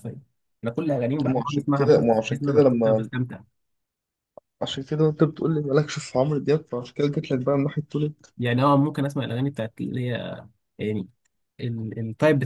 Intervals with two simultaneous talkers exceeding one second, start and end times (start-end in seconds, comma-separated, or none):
1.3-3.1